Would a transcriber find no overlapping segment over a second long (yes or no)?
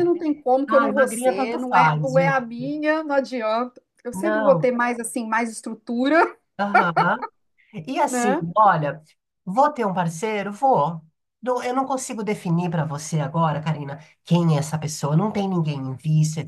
no